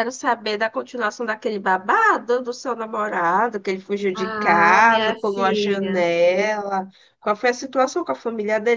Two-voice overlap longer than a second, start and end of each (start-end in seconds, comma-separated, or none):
4.1-6.0